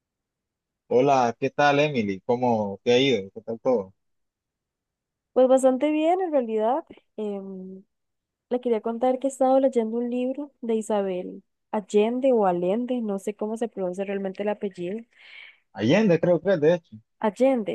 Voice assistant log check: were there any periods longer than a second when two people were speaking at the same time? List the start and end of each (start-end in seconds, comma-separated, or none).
none